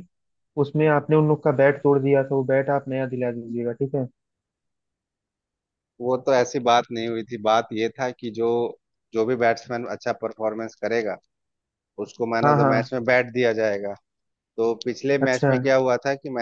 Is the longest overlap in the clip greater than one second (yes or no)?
no